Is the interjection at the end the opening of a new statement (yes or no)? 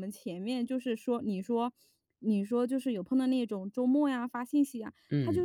no